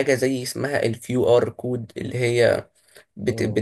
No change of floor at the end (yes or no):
yes